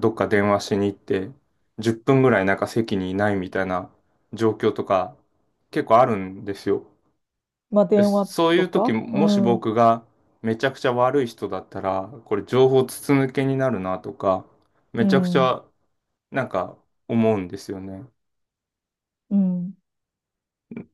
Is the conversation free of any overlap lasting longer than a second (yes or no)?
no